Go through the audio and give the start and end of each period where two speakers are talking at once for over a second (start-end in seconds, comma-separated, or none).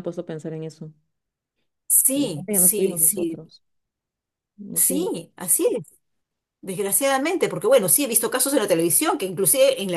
2.1-3.4